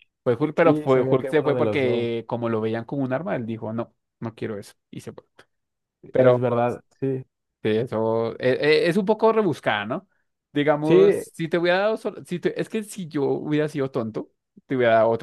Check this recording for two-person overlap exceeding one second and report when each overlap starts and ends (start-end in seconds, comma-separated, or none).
0.5-2.1